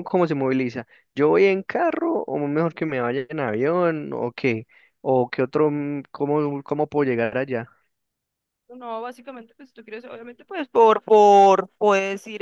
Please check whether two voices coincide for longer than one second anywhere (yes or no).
no